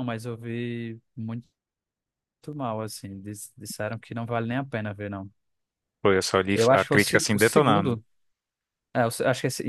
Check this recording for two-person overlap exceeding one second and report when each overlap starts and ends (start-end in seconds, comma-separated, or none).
6.5-8.0